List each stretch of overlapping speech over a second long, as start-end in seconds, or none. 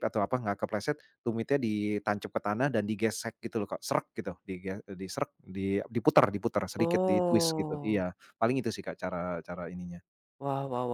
6.8-8.0